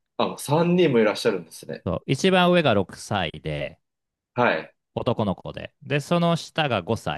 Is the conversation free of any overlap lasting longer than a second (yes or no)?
yes